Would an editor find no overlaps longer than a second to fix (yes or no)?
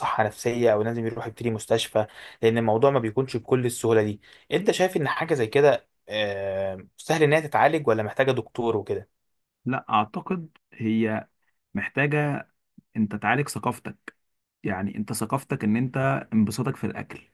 yes